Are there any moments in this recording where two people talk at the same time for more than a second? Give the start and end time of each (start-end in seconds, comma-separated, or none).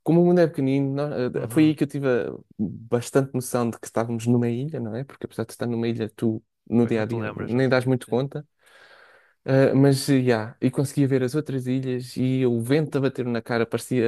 6.8-8.3